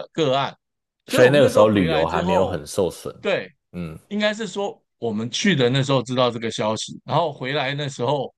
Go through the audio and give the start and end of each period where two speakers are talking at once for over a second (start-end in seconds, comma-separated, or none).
1.1-2.6